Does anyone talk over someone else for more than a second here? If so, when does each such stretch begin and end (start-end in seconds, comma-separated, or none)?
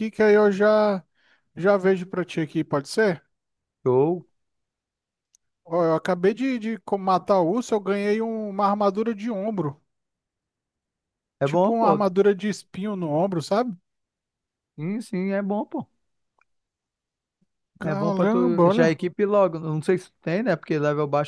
17.8-19.0